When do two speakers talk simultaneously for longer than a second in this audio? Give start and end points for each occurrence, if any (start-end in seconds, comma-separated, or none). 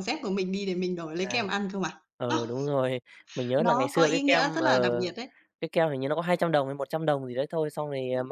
3.6-5.1